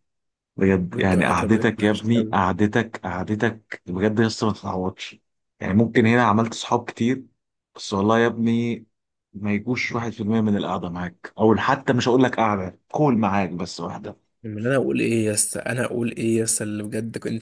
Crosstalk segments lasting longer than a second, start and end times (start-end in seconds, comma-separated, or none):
0.9-2.4